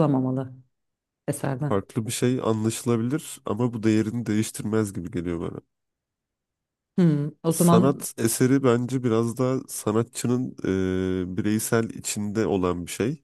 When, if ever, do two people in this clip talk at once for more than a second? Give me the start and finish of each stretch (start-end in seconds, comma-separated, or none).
none